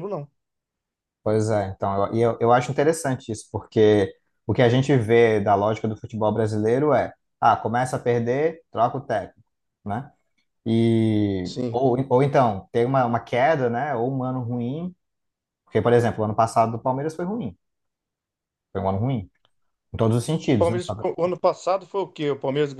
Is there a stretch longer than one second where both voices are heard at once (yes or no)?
no